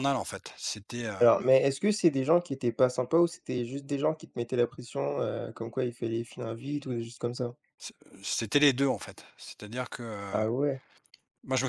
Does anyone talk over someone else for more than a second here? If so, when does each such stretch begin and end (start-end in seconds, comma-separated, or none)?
none